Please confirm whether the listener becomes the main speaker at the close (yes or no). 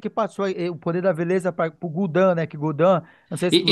yes